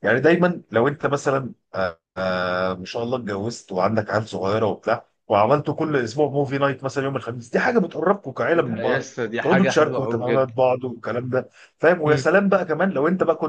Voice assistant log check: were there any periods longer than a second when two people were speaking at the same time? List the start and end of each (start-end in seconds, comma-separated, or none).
8.5-10.5